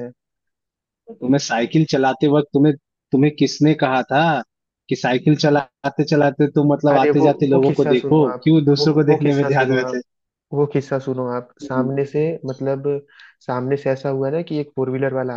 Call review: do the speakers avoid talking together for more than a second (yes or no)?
no